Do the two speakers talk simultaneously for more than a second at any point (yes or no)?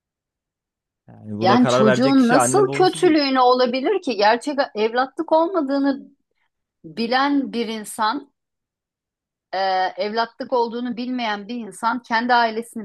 yes